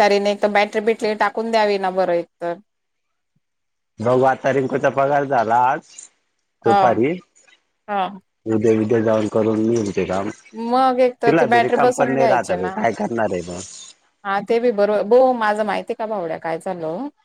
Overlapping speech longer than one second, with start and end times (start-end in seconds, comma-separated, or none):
11.2-12.7